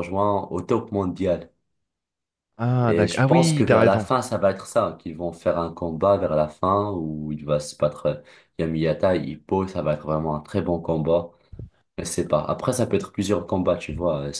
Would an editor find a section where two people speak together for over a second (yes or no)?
yes